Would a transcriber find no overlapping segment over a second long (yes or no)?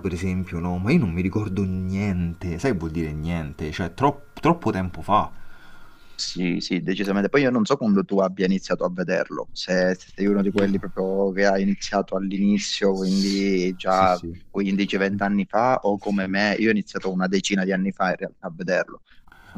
yes